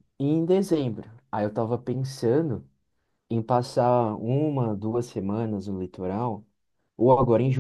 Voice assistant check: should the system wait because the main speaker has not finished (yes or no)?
yes